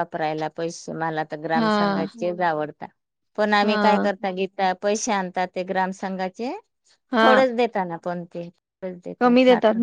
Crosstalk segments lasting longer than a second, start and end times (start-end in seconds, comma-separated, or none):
none